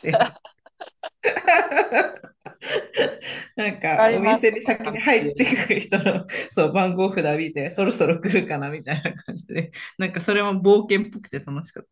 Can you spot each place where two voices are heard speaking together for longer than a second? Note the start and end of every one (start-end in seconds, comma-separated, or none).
4.0-5.5